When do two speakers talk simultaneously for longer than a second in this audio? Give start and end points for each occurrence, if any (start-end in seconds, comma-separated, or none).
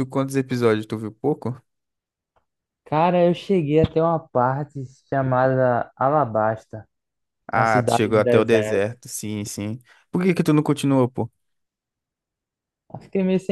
7.5-8.8